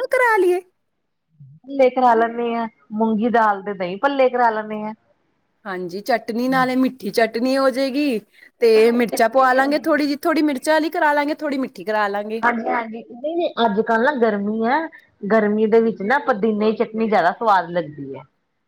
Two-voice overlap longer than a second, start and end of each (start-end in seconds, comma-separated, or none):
none